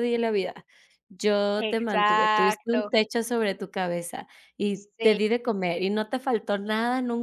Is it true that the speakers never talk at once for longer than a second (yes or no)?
no